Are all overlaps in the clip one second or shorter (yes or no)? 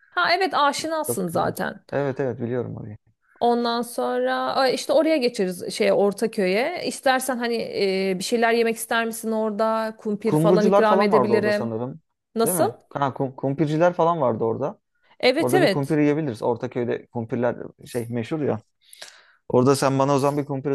no